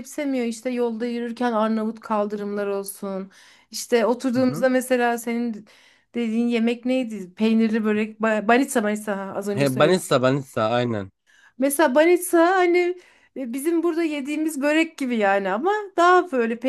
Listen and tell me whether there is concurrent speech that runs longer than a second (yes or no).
no